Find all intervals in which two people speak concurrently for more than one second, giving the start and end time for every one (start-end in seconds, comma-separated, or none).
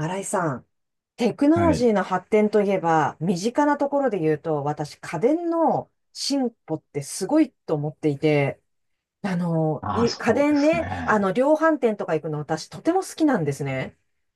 9.8-11.3